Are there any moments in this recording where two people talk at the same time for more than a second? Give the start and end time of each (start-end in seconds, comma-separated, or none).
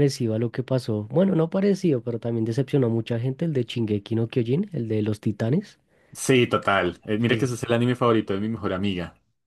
none